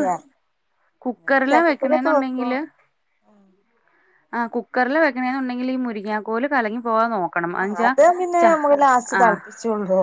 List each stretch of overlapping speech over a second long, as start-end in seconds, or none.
1.1-2.5